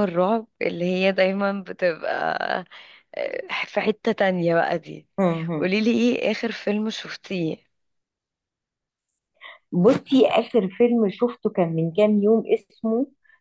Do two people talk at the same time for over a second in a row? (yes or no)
no